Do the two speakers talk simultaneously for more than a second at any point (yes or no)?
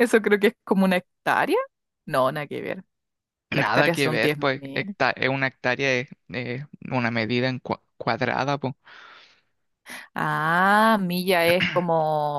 yes